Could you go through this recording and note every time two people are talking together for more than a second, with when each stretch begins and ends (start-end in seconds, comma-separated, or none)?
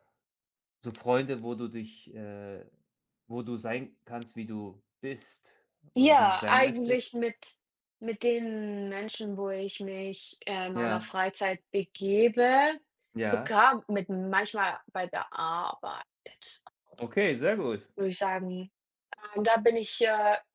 6.0-7.2